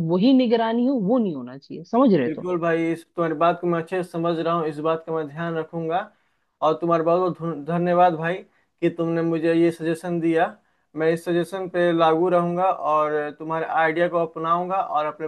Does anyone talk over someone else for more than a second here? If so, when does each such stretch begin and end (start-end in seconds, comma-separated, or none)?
none